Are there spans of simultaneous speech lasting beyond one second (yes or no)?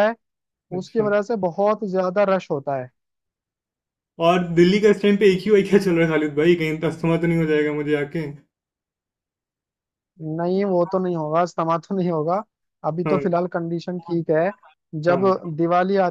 no